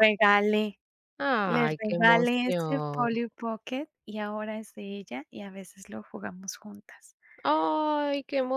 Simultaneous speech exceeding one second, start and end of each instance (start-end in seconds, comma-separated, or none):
1.4-3.1